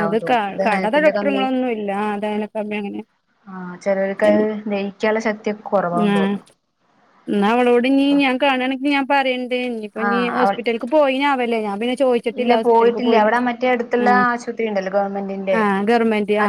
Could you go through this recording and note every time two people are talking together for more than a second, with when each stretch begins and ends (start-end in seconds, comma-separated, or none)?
none